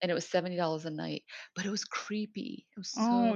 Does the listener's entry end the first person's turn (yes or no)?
yes